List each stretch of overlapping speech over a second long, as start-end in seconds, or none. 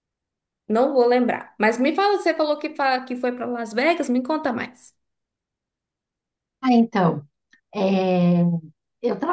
none